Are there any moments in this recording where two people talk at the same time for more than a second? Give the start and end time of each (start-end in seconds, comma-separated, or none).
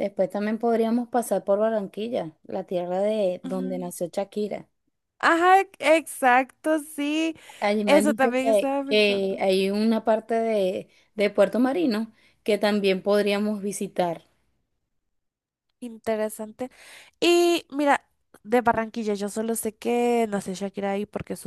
7.9-9.4